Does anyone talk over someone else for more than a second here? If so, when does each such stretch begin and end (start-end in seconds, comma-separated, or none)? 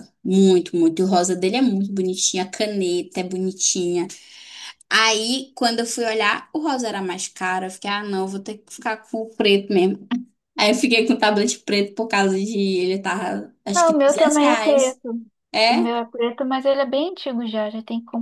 13.7-15.0